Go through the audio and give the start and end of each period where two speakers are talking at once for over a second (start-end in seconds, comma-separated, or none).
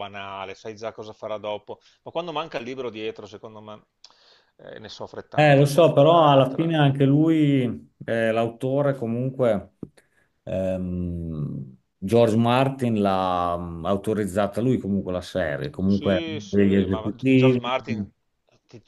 5.3-6.9, 15.8-17.6